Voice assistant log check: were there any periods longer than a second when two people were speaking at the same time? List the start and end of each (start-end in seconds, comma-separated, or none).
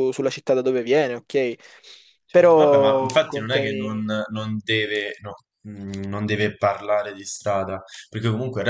2.3-4.0